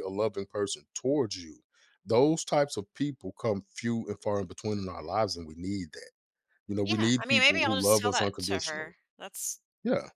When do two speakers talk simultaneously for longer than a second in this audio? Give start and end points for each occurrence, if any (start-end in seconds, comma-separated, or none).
6.8-8.9